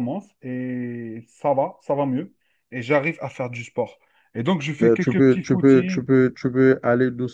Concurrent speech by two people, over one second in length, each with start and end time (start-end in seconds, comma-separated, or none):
4.8-6.0